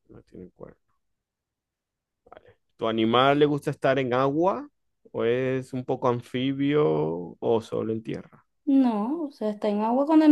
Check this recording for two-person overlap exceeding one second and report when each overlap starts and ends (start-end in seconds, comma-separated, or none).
none